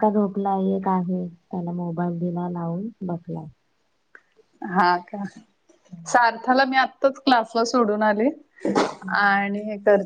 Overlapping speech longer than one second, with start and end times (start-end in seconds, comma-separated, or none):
none